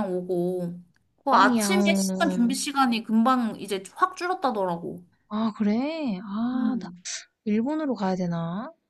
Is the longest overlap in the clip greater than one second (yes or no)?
yes